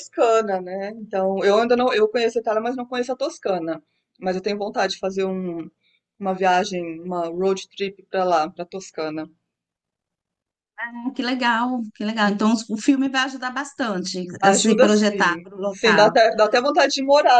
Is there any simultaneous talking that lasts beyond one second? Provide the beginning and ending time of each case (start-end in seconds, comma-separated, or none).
14.4-16.2